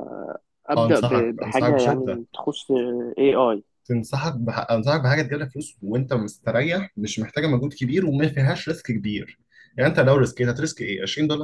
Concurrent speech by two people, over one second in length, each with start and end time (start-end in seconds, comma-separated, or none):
0.8-2.2